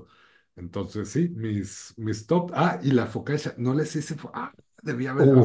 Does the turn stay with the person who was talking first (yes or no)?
no